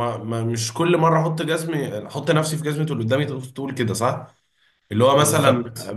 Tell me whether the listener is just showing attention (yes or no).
yes